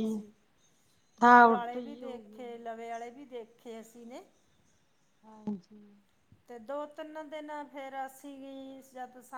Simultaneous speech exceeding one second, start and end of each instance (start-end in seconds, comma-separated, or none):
1.2-2.6